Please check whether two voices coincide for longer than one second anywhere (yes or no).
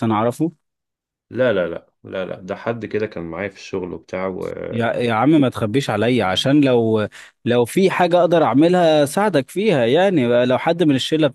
no